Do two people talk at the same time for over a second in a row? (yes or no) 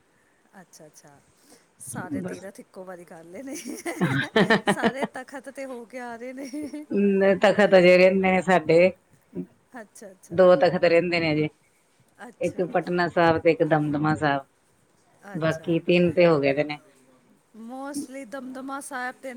no